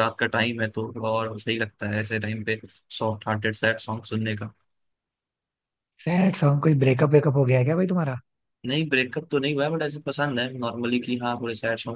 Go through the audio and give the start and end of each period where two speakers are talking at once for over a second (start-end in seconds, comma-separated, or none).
none